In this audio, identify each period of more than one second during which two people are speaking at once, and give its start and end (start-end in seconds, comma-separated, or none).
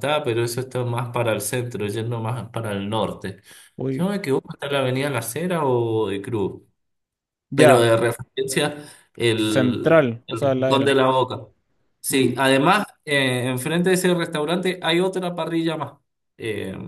9.3-11.0